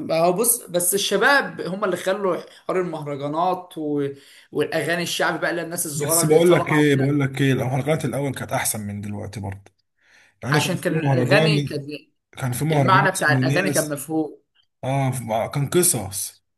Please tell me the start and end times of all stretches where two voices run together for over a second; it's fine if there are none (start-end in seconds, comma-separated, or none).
5.9-7.1, 10.5-11.8, 12.7-14.0